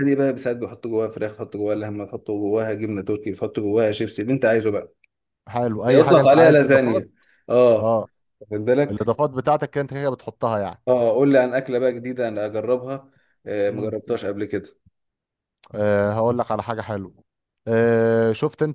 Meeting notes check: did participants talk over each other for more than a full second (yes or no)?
yes